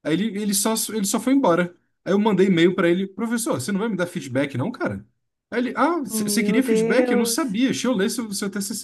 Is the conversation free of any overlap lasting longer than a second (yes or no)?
no